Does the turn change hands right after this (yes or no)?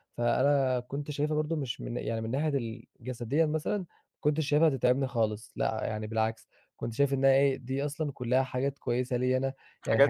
no